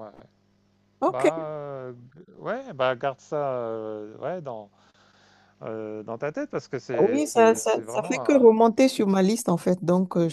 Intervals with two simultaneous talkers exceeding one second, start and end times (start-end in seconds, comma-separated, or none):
7.0-8.4